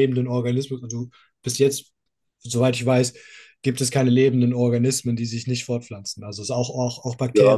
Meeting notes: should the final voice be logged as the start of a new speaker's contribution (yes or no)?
yes